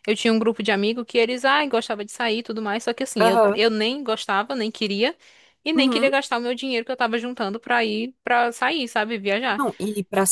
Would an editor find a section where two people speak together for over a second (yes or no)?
no